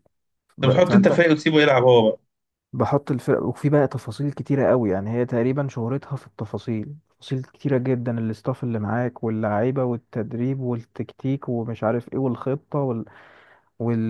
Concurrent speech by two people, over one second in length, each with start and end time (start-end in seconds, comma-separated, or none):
none